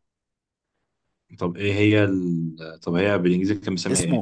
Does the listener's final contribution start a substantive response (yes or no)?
yes